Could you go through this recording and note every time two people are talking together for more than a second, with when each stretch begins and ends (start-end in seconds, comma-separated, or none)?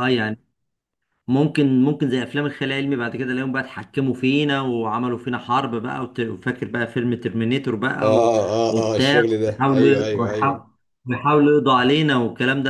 8.0-10.6